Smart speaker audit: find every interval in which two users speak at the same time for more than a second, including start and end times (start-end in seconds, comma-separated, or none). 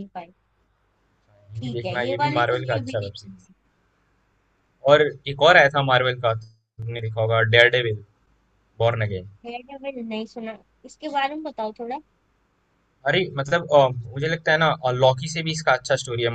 1.6-3.5